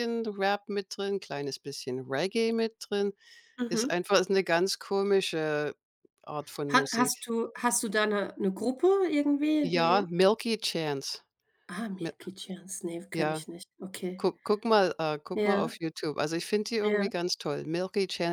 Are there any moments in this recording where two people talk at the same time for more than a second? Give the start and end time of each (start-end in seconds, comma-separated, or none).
none